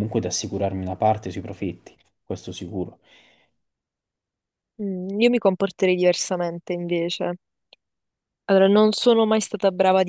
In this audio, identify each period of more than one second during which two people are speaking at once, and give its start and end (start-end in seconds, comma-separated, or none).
none